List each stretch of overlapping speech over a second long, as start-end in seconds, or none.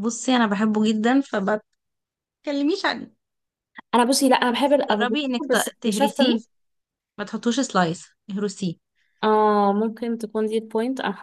4.6-6.3